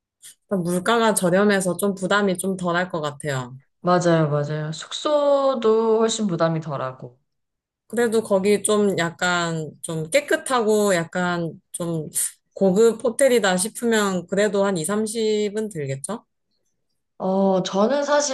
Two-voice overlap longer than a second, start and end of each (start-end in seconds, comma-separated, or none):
none